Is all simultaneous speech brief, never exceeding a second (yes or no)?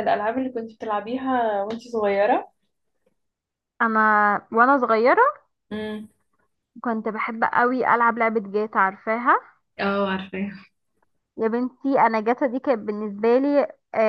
yes